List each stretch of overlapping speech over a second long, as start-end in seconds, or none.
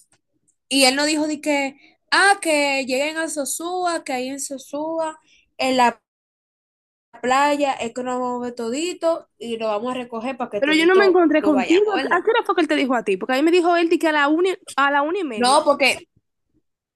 10.6-12.3